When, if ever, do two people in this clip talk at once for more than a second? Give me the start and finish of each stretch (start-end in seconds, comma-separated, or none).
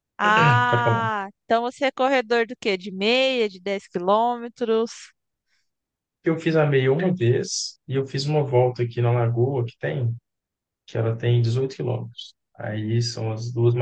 none